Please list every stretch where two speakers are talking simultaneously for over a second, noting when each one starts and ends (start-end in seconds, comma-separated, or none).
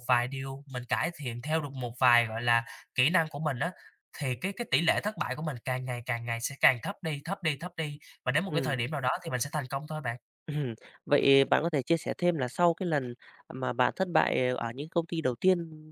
none